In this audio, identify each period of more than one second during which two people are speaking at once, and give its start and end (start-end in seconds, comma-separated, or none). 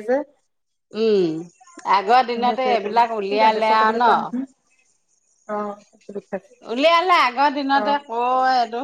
2.3-4.1